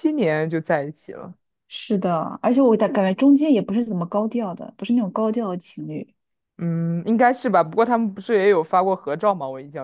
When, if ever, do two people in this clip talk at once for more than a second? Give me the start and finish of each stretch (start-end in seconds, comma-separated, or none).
none